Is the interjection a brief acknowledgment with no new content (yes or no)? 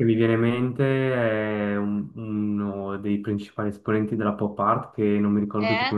yes